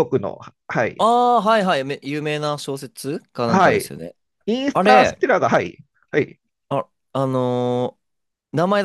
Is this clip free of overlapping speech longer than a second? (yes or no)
yes